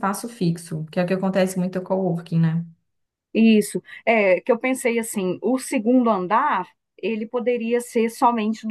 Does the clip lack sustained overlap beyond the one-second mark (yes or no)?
yes